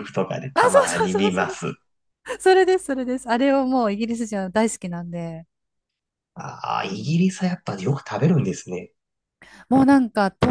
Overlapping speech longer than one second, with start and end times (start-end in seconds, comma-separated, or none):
0.5-1.7